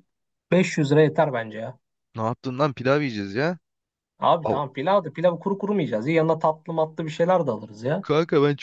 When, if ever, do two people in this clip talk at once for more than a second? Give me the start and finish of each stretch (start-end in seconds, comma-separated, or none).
none